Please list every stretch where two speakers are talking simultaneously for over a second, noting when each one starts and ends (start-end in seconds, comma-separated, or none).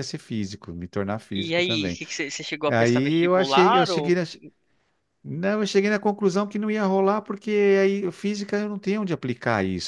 2.7-4.2